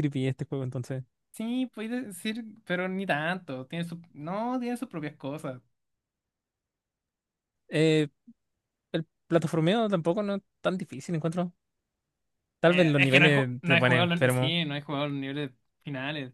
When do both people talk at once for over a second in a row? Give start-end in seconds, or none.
12.6-14.6